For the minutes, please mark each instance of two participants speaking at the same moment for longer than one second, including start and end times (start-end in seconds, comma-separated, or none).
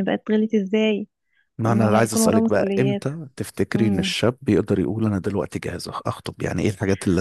1.6-3.1